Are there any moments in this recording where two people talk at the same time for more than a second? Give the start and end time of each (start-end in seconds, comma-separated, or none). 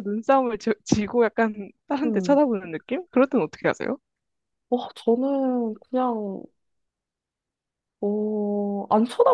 none